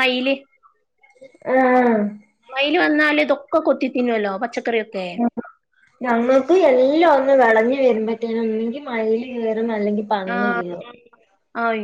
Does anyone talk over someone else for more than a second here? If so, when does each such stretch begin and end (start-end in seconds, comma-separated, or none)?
none